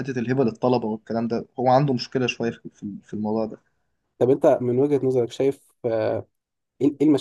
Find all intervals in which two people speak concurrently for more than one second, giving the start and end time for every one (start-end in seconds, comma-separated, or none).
none